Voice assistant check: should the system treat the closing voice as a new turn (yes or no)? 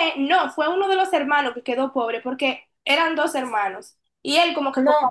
no